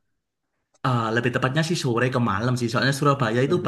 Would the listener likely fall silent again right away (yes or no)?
yes